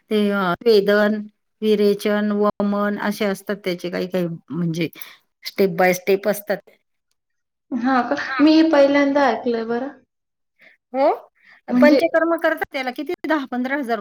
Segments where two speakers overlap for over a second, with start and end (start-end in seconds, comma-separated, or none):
none